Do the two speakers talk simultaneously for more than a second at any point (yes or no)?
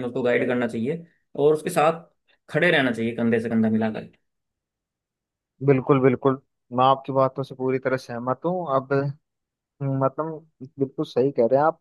no